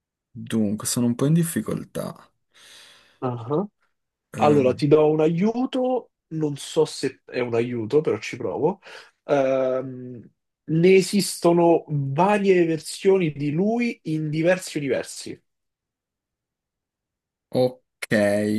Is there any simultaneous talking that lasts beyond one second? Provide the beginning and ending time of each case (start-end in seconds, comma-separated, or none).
none